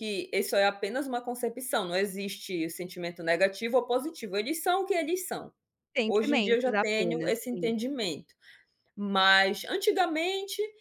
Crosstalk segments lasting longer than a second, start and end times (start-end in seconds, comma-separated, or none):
6.1-7.7